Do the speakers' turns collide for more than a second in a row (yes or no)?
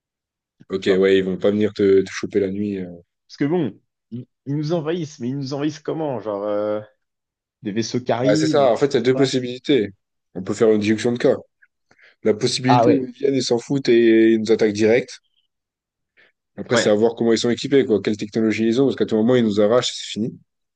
yes